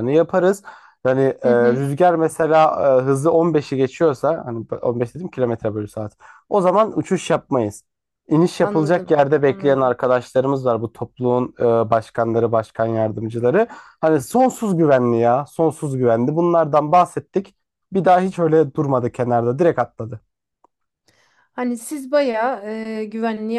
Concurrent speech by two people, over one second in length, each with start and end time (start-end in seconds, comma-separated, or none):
8.6-10.0